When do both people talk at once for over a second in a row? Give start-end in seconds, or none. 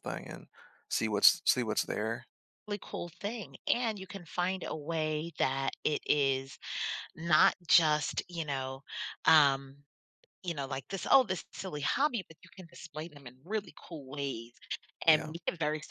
none